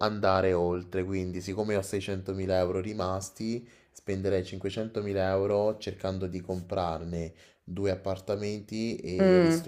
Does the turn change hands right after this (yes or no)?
no